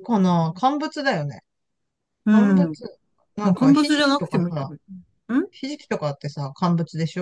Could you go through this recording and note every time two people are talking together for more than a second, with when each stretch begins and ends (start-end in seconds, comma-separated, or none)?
3.4-4.7